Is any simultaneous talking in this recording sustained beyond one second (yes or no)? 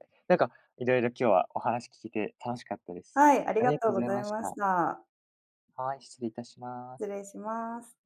yes